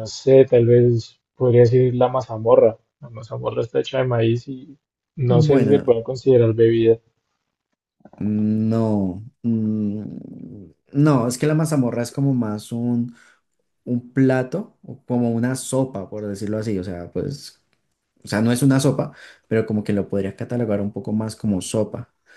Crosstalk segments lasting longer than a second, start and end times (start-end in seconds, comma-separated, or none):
none